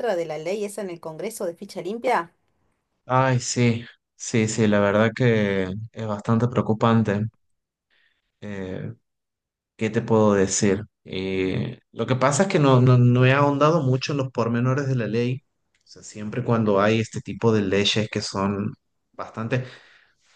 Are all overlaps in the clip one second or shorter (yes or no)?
yes